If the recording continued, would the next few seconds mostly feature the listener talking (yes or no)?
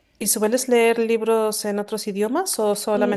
yes